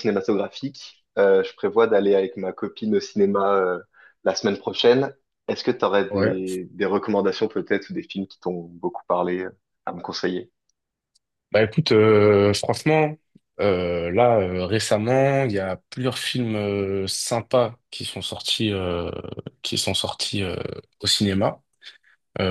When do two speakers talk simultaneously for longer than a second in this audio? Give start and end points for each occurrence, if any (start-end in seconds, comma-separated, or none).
none